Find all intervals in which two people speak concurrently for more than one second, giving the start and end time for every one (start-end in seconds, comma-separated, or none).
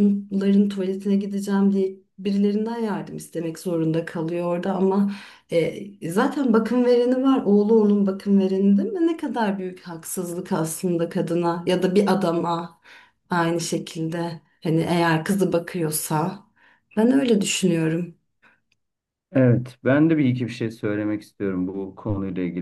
none